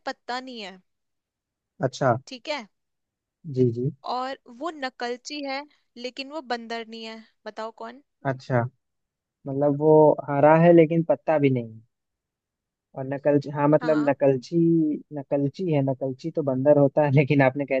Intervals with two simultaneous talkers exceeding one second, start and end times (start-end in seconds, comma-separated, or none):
none